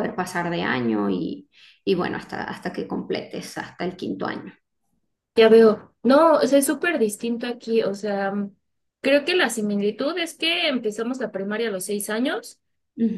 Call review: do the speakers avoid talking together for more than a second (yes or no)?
yes